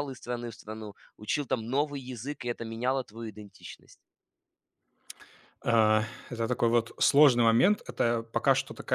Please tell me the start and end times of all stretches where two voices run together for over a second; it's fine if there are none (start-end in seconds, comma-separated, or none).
none